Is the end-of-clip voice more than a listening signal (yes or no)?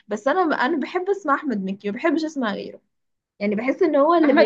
yes